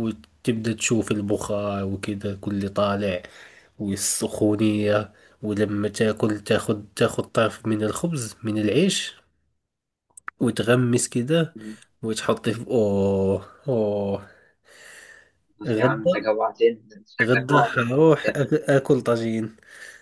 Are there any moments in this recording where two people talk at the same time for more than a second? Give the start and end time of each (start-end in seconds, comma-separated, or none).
17.2-18.4